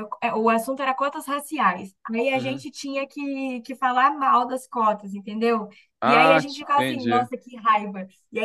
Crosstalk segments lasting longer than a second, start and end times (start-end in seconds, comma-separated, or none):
6.0-7.3